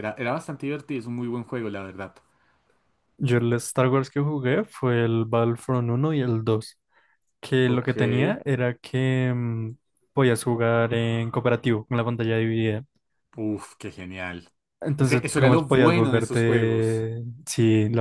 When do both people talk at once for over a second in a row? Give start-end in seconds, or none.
15.0-17.1